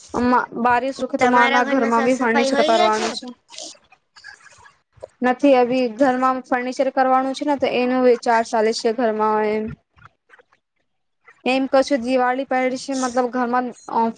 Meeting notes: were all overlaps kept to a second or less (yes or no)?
no